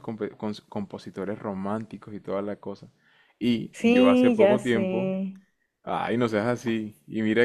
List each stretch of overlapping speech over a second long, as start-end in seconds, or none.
3.7-5.2